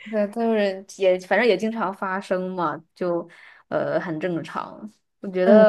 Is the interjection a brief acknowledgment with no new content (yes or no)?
yes